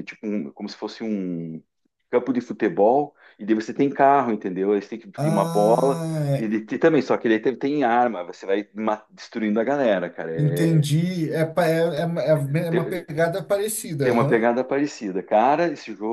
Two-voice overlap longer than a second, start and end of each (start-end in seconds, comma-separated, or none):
5.2-6.5